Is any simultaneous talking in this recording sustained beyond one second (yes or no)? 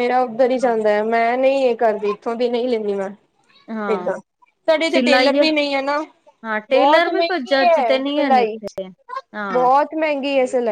yes